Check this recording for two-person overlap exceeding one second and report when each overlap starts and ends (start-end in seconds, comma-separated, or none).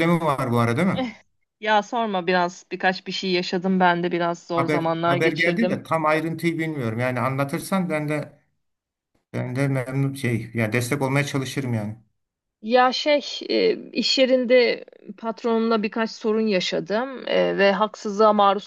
4.5-5.8